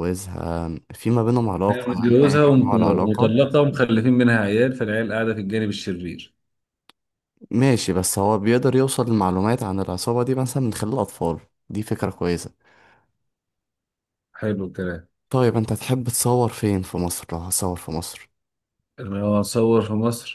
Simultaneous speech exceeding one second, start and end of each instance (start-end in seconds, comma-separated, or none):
1.7-3.5